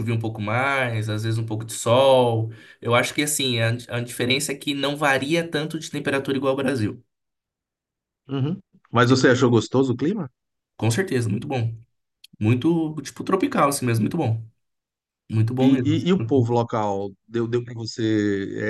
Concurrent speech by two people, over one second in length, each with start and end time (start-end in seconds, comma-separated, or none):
none